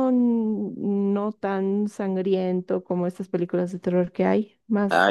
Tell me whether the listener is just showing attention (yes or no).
no